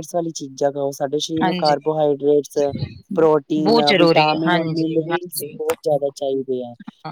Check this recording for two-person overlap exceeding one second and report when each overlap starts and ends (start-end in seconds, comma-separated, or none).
3.6-5.6